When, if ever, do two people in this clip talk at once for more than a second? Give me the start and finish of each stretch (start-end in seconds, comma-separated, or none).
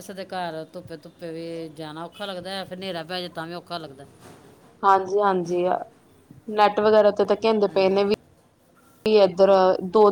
none